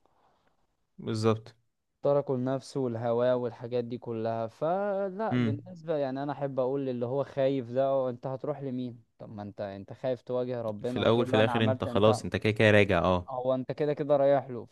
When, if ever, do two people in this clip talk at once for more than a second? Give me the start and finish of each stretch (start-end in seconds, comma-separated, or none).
10.8-12.3